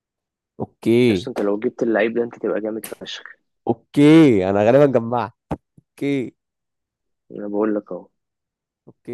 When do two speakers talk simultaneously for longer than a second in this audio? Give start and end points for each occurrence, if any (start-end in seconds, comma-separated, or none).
none